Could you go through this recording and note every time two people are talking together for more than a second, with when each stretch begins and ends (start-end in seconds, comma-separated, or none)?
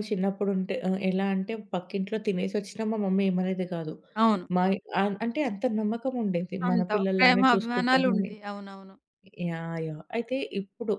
6.7-8.3